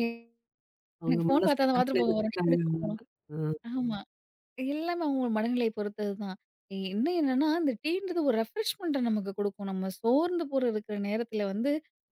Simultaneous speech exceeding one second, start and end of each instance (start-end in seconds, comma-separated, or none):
1.1-3.0